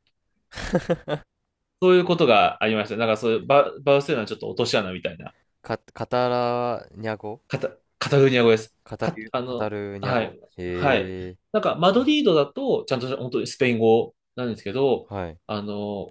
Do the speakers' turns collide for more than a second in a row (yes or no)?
yes